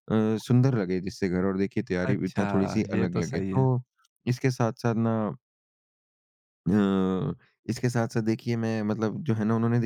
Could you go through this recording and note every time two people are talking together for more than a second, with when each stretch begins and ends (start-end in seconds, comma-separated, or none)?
2.0-3.7